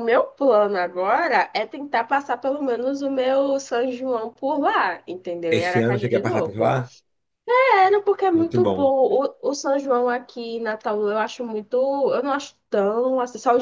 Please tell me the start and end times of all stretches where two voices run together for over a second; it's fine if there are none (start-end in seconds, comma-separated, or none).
5.5-6.8